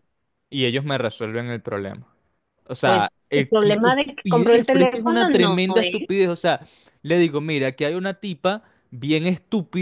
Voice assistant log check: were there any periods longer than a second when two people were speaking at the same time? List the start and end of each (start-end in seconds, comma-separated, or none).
2.8-6.1